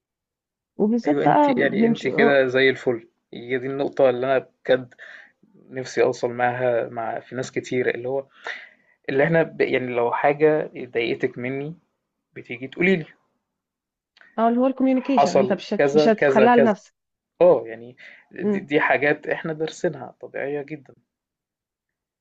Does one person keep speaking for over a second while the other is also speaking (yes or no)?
yes